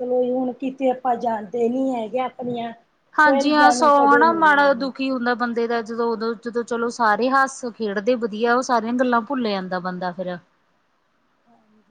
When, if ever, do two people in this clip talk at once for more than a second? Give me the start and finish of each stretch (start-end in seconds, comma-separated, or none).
3.2-4.9